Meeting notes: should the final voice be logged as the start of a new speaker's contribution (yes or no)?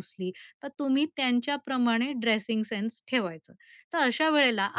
no